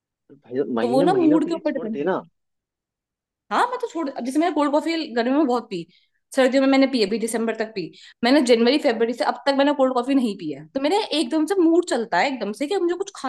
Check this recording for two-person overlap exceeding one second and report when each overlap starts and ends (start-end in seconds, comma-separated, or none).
0.8-2.2